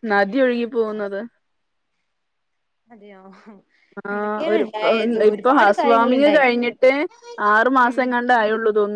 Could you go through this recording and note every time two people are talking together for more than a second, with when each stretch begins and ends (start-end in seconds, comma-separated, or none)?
4.1-6.4